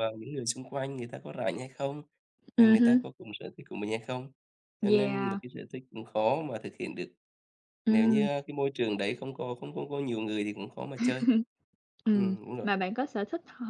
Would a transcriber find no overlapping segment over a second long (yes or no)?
yes